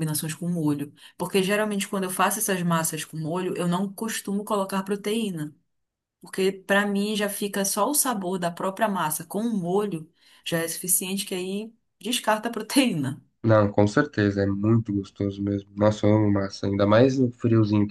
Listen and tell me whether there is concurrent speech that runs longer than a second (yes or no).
no